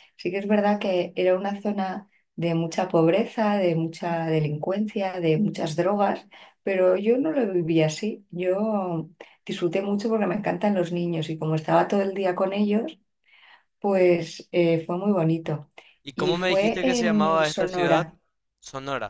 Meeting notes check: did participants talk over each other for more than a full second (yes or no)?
yes